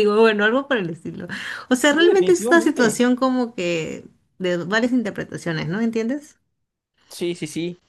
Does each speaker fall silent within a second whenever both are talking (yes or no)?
no